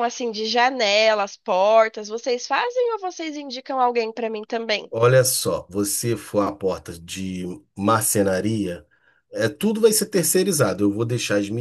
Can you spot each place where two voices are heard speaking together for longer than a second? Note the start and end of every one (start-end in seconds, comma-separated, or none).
none